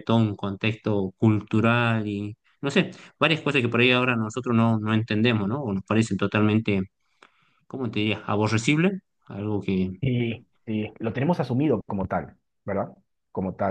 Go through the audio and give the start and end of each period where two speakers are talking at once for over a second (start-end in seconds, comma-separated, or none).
none